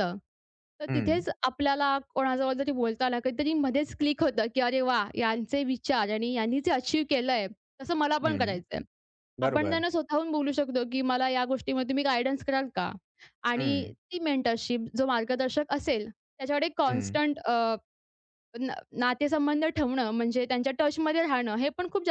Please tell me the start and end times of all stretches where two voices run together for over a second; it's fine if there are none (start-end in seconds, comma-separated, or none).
none